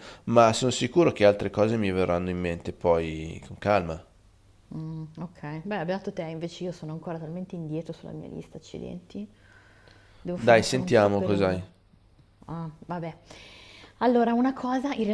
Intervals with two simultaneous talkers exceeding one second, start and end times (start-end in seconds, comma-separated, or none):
10.3-11.6